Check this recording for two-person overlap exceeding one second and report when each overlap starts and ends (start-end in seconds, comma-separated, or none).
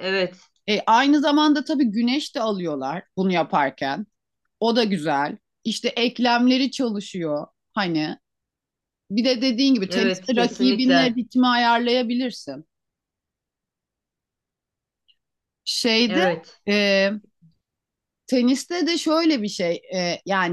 9.9-11.2